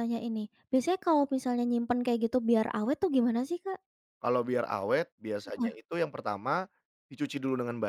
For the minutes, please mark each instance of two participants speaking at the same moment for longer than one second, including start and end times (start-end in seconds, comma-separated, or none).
none